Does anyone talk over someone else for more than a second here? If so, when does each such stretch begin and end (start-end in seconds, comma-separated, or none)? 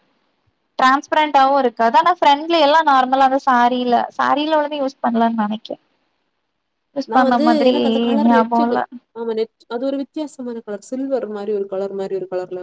none